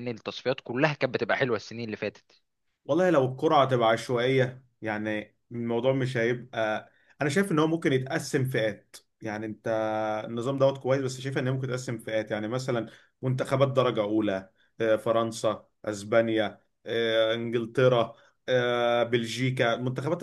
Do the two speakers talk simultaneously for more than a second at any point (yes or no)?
no